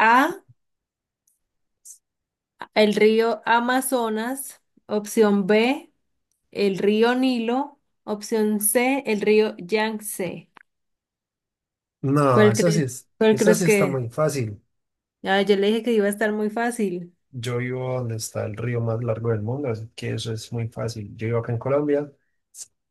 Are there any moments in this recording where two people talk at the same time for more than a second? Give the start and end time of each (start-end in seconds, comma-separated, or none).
12.3-14.0